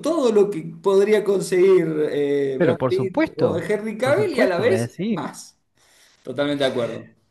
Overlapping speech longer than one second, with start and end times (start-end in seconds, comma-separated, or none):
2.6-5.3